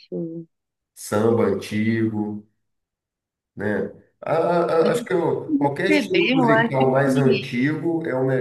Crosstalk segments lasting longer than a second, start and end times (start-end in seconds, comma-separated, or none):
5.9-7.5